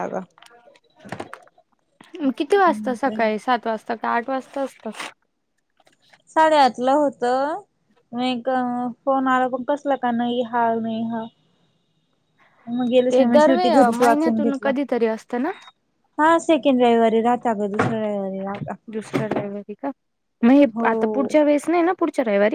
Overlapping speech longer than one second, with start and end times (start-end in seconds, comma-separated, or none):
13.1-14.7